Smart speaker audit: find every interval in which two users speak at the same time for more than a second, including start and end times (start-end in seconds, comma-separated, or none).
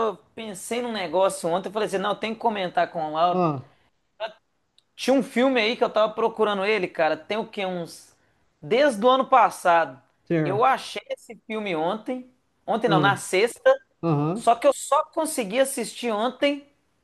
none